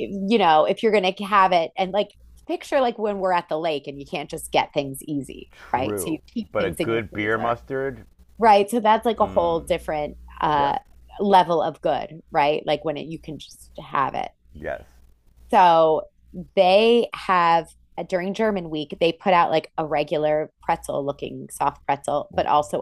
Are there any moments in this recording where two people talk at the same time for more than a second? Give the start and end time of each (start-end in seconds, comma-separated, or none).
5.5-7.6